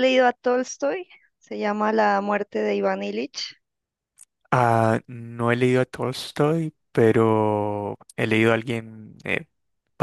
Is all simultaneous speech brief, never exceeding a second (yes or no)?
yes